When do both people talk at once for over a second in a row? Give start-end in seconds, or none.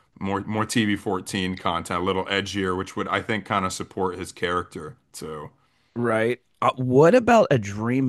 none